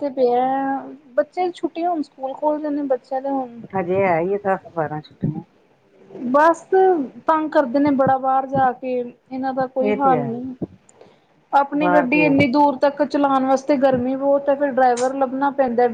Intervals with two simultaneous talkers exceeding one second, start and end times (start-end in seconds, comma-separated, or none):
none